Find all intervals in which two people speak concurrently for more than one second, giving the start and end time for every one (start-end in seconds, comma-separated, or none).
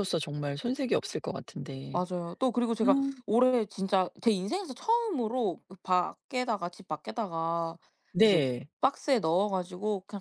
none